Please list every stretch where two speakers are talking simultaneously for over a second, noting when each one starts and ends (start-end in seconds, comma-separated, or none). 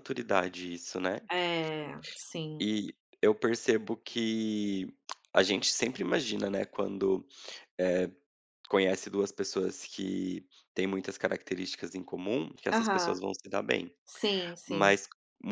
none